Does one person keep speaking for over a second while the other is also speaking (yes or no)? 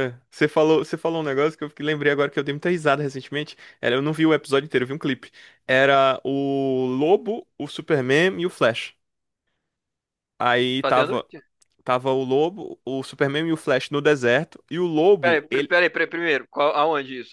no